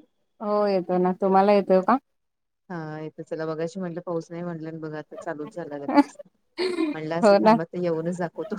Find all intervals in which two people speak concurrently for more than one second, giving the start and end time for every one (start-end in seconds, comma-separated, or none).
none